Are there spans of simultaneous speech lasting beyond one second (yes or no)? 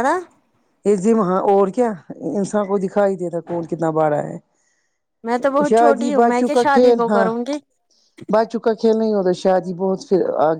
yes